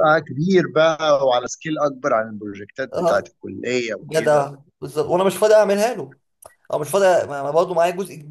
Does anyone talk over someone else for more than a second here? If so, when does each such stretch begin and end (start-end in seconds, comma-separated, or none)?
none